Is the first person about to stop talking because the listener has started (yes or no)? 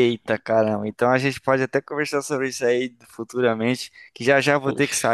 no